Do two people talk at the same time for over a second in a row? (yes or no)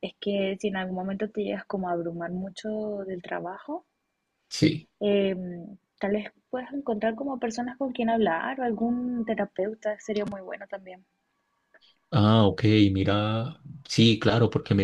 no